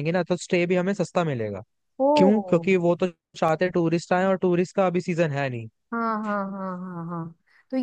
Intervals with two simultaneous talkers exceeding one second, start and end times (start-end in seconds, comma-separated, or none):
none